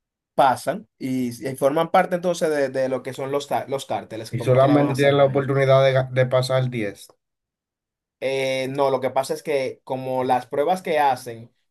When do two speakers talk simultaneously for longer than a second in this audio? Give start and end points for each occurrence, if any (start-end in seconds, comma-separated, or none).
4.3-5.5